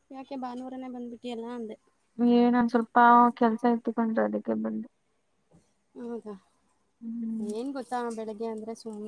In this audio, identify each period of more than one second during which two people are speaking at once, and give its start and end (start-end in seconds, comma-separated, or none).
none